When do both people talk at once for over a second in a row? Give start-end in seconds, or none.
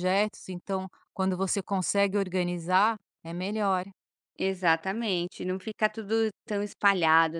none